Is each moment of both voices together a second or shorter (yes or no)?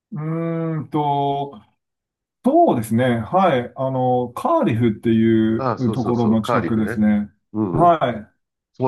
no